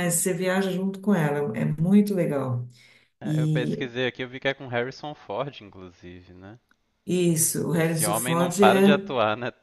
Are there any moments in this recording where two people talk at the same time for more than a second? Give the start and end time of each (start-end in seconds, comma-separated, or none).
7.7-9.0